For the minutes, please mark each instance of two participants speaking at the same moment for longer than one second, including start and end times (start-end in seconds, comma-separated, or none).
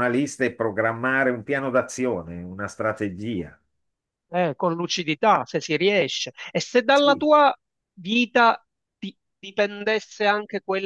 none